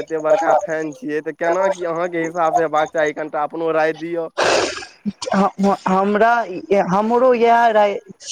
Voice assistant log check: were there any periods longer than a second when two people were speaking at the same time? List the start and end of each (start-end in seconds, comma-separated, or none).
none